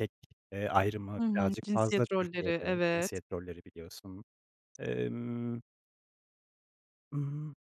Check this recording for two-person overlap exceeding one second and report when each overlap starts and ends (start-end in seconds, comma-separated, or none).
1.2-3.1